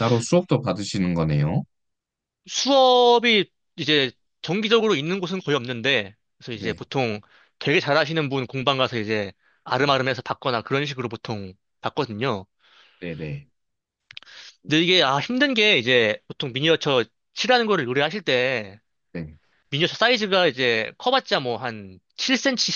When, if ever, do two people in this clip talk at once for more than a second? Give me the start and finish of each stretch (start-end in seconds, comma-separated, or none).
none